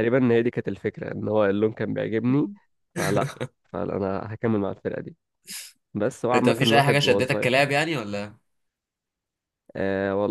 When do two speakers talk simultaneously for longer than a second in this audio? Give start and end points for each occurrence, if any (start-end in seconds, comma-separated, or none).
6.3-7.5